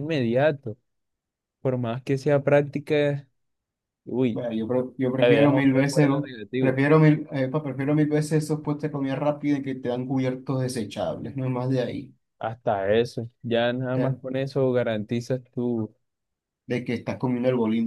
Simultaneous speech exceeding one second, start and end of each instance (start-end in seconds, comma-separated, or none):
5.2-6.8